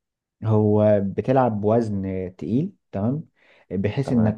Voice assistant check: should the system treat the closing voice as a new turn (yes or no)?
no